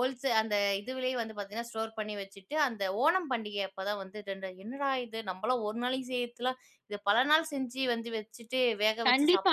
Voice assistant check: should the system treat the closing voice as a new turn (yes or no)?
yes